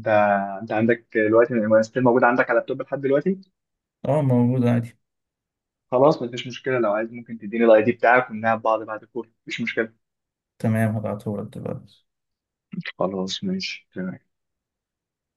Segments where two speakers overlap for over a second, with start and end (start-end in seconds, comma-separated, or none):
none